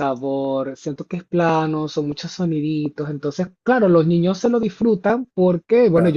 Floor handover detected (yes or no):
no